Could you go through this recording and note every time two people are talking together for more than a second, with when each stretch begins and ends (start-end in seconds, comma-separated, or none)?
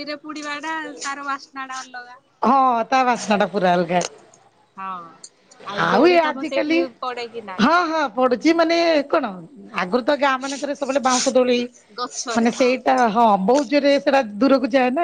none